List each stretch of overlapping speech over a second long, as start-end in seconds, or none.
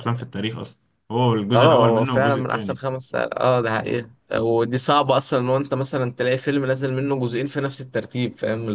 1.5-2.8